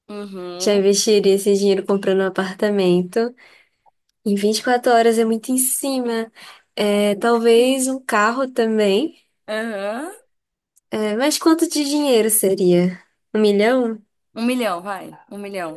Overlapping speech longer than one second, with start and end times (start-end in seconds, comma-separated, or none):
none